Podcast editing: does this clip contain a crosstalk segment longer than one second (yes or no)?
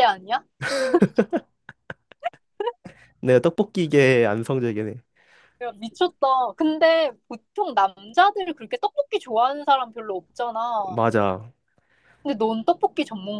no